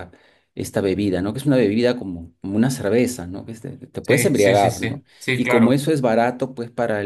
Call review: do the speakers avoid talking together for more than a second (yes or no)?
no